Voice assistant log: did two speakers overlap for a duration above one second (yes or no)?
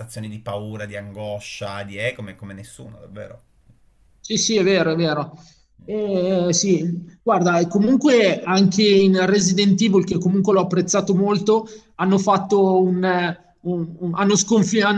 no